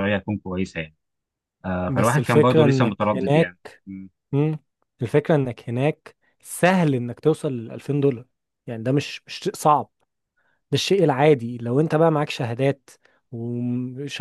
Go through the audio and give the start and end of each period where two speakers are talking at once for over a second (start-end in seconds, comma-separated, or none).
1.9-3.6